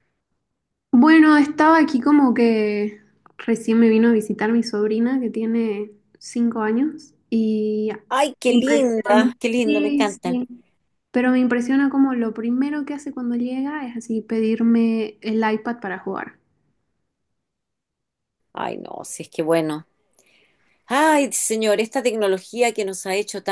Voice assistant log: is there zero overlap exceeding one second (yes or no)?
no